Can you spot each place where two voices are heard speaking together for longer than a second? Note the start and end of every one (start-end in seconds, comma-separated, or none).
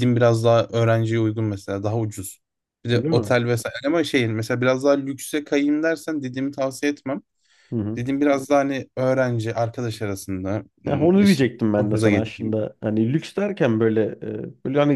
10.9-12.6